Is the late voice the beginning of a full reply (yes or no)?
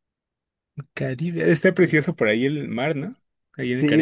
yes